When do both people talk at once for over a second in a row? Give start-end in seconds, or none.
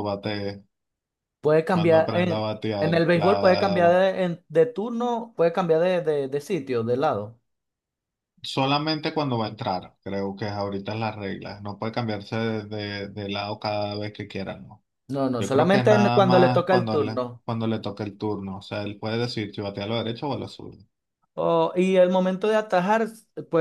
1.7-4.0, 15.4-17.4